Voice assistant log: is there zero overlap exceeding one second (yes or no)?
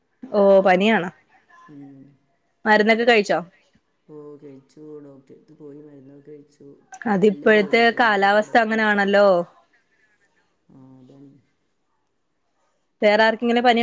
no